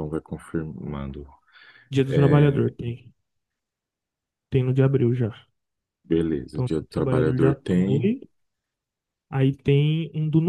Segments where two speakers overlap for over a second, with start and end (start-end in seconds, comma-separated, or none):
6.5-8.1